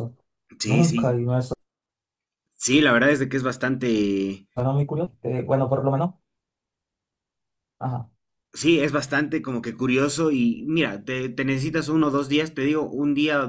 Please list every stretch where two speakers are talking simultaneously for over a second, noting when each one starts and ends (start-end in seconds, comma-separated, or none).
none